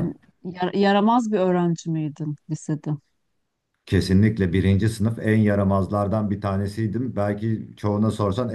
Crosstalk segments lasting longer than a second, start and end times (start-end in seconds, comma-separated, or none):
none